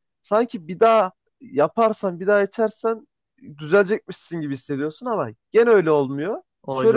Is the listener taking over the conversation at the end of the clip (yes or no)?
no